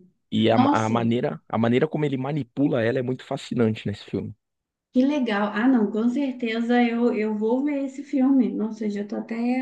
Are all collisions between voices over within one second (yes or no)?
yes